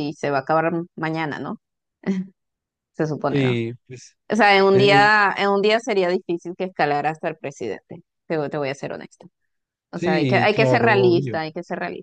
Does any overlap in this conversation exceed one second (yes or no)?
yes